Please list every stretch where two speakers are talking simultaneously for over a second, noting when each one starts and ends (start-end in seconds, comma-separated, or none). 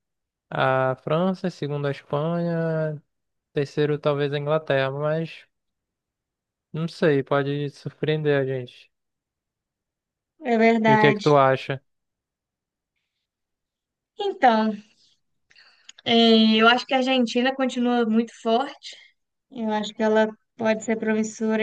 none